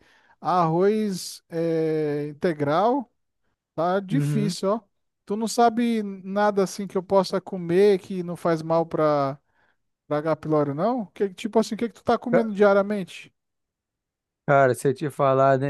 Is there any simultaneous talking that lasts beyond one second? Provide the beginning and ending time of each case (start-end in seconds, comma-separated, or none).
none